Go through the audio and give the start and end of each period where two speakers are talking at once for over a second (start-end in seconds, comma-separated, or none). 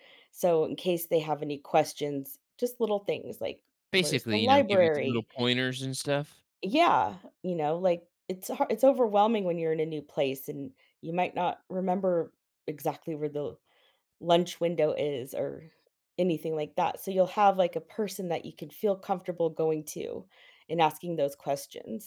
3.9-5.3